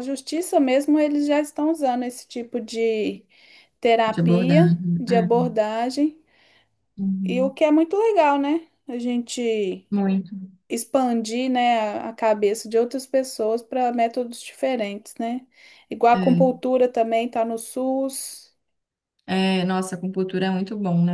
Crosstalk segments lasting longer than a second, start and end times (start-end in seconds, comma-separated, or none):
4.1-5.4